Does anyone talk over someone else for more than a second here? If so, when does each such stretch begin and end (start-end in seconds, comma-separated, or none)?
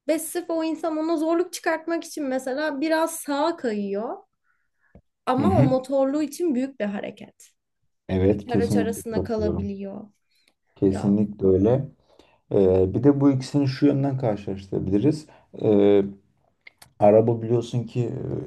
8.3-9.7